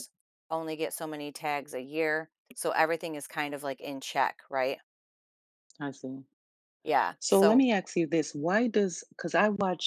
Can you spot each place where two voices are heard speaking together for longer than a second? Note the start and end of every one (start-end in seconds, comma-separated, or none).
none